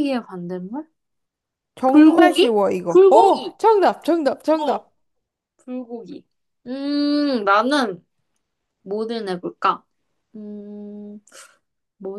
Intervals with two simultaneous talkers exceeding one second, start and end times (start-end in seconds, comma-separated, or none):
1.9-3.6